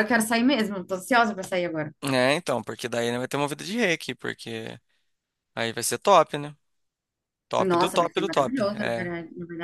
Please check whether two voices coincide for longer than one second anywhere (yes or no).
yes